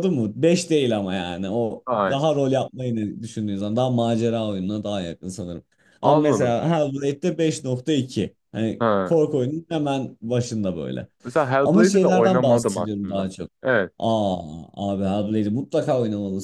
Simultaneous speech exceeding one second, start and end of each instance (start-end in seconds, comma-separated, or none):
11.6-13.3